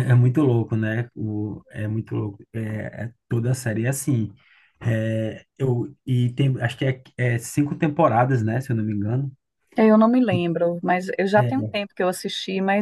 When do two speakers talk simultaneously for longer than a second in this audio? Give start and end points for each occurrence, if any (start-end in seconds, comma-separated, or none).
none